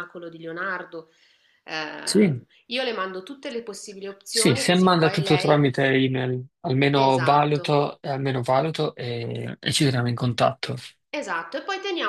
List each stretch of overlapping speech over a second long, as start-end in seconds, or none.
4.3-5.6